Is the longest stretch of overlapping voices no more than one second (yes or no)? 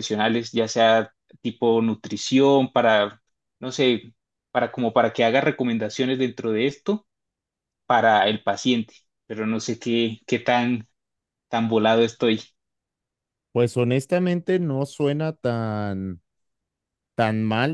yes